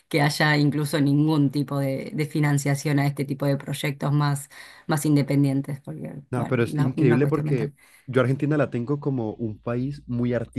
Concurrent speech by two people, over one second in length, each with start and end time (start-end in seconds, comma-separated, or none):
6.3-7.7